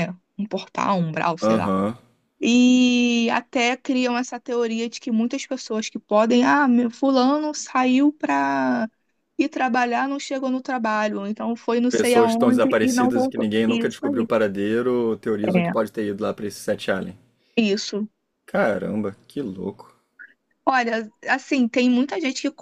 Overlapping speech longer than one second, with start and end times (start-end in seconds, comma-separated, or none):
11.9-14.3